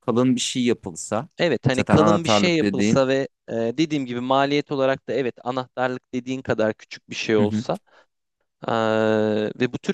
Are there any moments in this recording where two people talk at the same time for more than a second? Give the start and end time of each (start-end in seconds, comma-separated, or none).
1.7-3.0